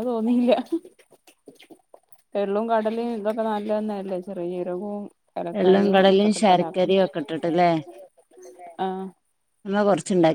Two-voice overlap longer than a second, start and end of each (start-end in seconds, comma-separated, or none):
5.6-7.0